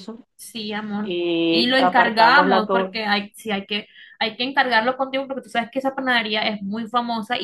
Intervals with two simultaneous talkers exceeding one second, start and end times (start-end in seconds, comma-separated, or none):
1.0-3.0